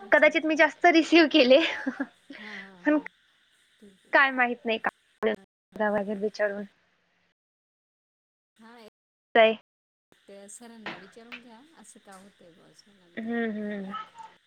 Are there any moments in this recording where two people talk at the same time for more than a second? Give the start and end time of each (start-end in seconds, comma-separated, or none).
none